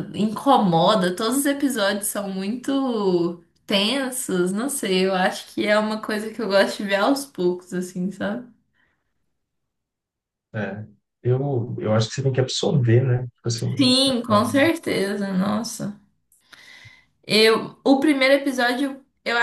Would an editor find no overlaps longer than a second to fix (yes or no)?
yes